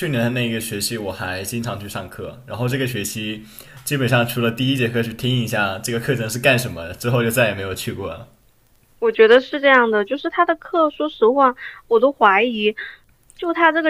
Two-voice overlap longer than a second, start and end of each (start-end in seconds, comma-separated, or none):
none